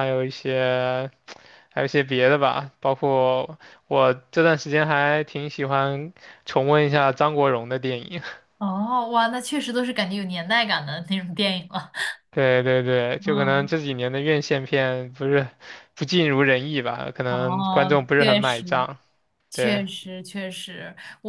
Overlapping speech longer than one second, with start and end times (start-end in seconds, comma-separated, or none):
17.2-18.9